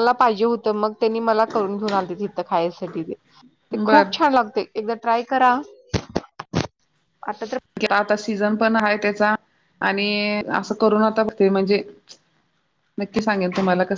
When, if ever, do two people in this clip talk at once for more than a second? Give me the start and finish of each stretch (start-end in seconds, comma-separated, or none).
none